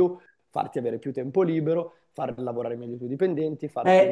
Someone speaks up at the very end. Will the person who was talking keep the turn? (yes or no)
no